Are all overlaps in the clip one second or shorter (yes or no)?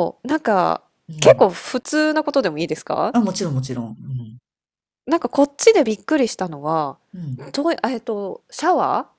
yes